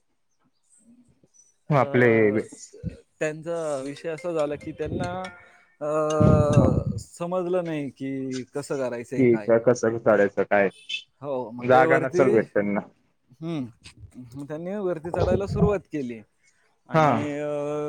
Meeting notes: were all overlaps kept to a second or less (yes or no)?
yes